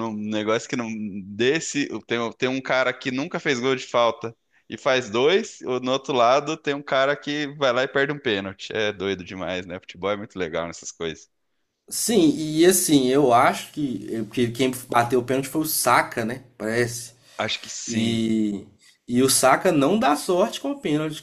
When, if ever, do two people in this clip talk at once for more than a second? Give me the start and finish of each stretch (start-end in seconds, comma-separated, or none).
none